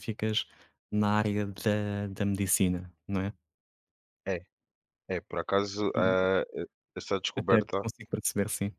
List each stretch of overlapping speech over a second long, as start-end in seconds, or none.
none